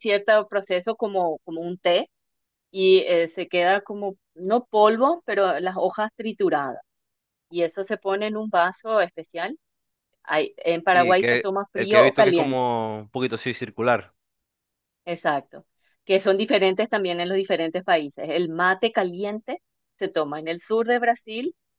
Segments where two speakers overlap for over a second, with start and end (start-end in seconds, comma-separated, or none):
10.9-12.7